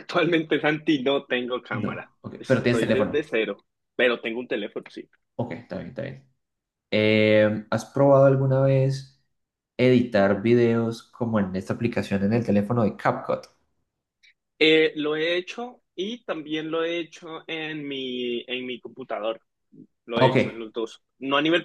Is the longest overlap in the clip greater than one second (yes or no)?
yes